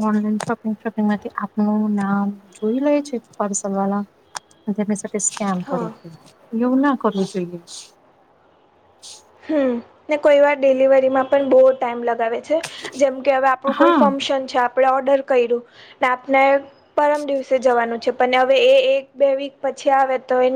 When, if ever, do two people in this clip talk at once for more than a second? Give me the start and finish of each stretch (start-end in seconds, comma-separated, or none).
none